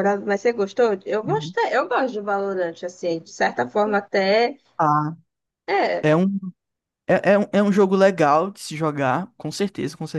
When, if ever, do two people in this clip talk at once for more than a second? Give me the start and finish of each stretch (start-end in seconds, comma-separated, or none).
none